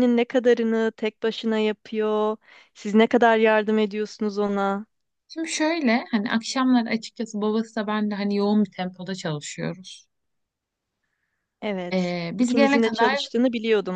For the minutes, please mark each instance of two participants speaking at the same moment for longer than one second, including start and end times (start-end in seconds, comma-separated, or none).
11.9-13.2